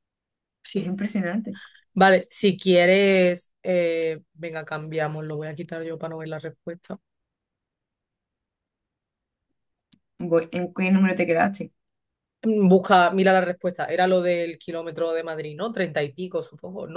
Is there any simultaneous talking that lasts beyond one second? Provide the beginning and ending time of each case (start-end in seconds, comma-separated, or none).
none